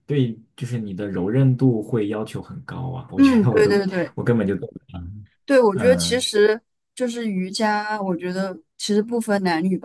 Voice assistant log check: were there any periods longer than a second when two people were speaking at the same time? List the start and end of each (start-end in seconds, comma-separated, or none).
none